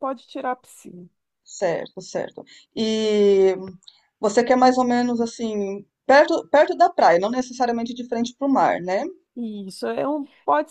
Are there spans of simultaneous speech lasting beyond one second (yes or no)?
no